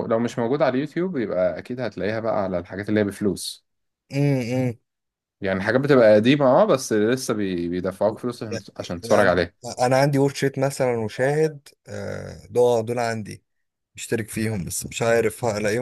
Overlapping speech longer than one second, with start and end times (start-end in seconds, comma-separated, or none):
none